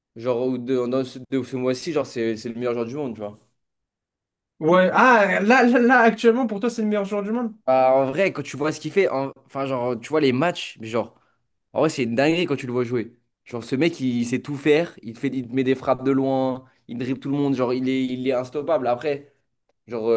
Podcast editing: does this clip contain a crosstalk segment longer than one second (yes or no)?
no